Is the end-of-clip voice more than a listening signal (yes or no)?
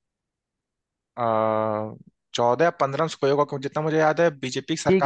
yes